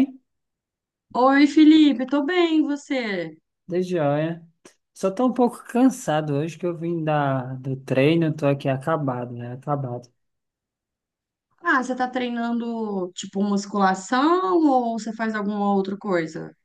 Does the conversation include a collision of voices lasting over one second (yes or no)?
no